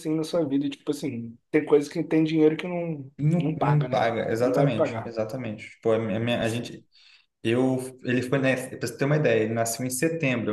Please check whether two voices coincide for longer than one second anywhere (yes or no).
yes